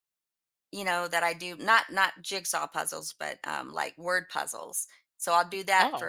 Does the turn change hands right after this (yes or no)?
no